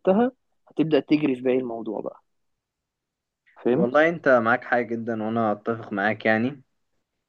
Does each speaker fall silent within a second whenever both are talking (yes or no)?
yes